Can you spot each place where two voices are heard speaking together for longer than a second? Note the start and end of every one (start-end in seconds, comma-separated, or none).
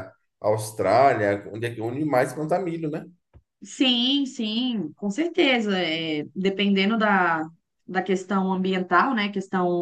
none